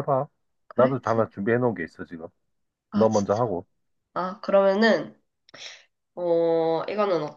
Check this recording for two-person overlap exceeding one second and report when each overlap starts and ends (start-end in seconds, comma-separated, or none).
none